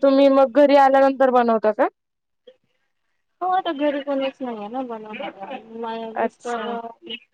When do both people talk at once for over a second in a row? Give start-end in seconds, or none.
none